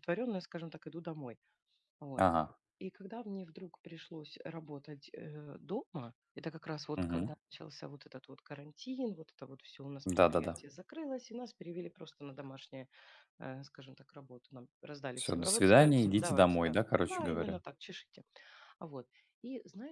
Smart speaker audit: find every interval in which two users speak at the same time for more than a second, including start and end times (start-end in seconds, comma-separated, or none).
15.2-17.6